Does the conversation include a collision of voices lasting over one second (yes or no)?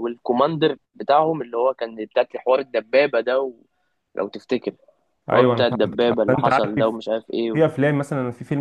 yes